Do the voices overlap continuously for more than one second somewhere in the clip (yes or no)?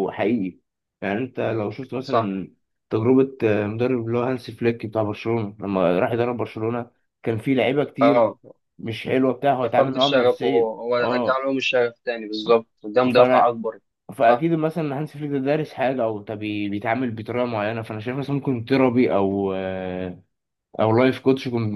yes